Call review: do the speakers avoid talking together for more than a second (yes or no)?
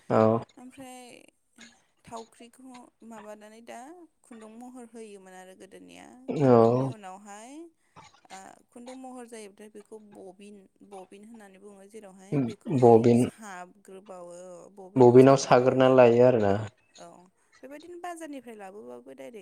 yes